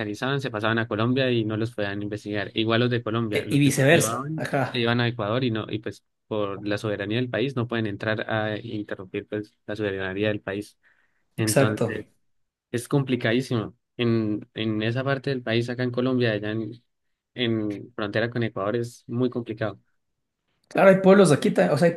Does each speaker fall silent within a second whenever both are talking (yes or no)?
no